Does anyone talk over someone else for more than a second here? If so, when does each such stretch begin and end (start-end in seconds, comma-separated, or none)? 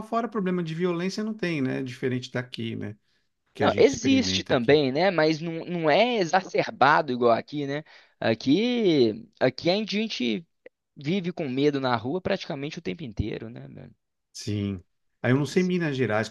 3.6-4.8